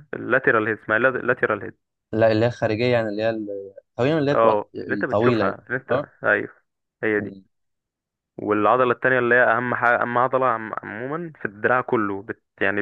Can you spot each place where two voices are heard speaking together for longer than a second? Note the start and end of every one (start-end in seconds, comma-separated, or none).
4.3-6.0